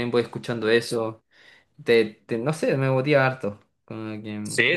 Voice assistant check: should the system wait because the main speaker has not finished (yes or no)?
no